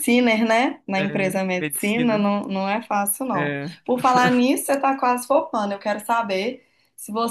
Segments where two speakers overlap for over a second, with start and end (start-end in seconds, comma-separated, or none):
1.0-2.3